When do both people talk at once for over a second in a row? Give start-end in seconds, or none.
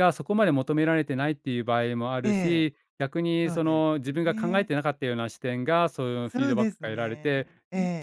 3.4-4.7, 6.3-7.5